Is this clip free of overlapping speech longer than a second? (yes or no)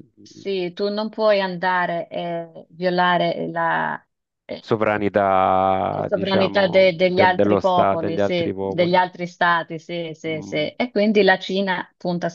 no